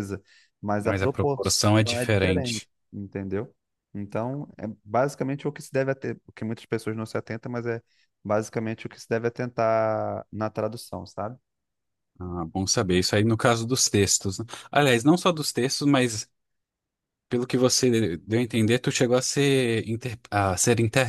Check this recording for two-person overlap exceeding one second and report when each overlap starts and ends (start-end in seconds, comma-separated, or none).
0.8-2.7